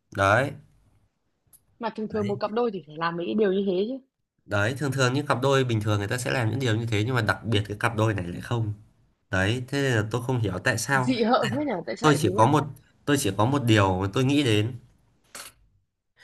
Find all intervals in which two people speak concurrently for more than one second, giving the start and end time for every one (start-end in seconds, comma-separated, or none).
none